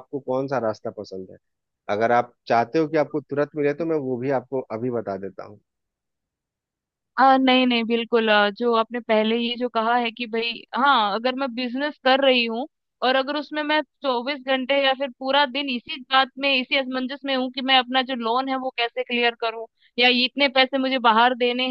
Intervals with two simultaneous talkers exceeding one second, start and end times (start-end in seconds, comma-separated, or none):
none